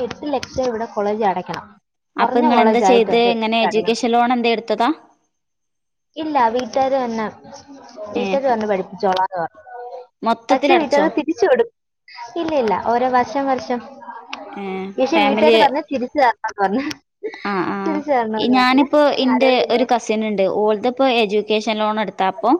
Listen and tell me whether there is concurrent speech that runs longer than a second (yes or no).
yes